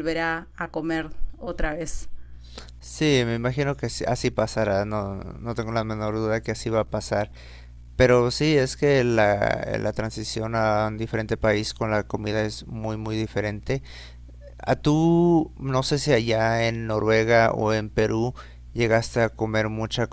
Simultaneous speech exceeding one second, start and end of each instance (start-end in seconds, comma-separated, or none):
none